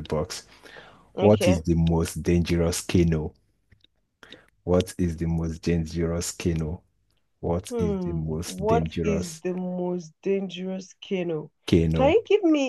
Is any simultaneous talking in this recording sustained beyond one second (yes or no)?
yes